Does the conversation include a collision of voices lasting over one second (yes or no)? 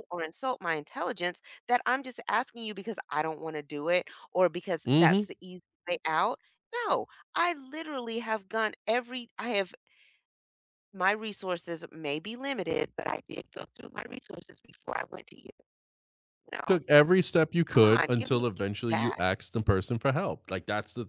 yes